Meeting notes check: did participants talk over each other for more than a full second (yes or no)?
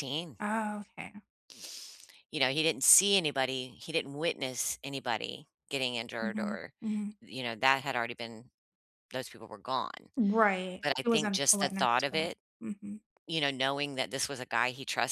yes